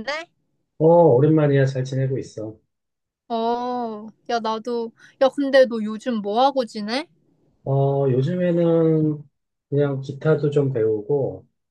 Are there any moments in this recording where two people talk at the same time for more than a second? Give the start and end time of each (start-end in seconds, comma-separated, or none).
none